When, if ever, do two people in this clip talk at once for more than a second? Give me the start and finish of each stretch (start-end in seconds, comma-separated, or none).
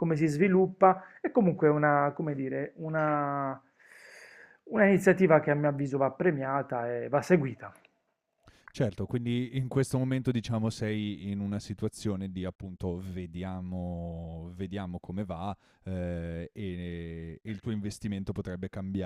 none